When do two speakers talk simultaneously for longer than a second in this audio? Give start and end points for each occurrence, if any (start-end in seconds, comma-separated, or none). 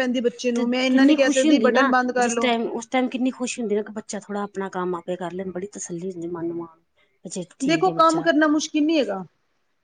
0.5-2.5